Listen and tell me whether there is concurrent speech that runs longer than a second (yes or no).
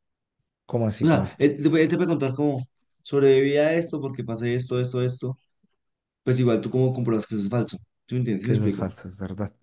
no